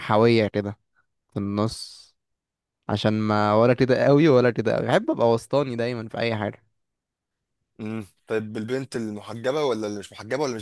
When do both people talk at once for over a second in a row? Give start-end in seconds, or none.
none